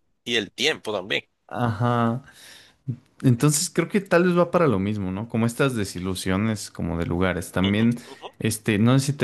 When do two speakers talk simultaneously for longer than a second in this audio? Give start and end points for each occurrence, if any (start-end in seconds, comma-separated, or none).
none